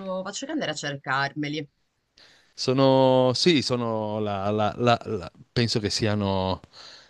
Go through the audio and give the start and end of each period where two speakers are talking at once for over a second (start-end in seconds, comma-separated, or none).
none